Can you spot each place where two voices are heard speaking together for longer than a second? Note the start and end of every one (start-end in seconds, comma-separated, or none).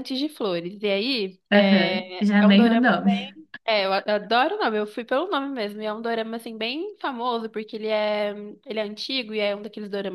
1.5-3.3